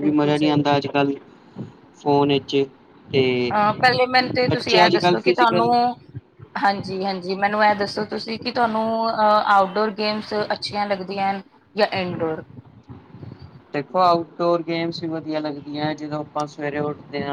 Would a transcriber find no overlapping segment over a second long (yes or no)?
no